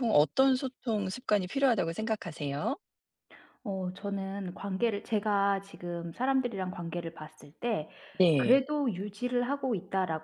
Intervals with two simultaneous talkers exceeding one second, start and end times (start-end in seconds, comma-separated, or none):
none